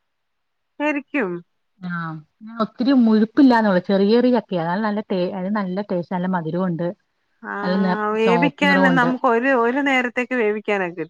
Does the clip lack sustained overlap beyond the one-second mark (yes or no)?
yes